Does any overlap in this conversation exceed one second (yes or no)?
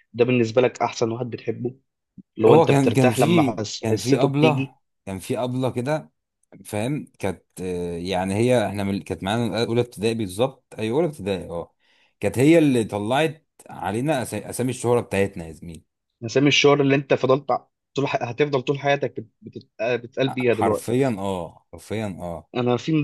yes